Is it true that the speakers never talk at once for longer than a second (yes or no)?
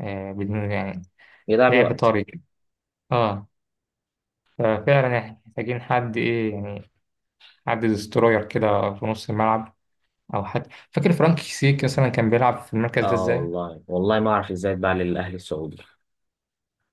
yes